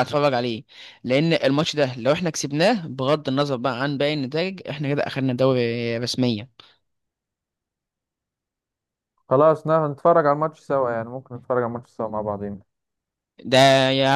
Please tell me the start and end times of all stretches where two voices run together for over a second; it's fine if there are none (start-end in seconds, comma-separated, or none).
none